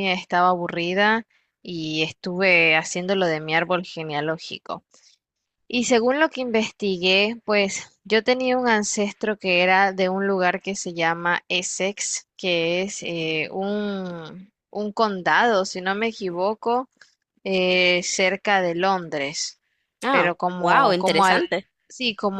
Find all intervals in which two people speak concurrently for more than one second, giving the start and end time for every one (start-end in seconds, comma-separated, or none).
20.1-21.4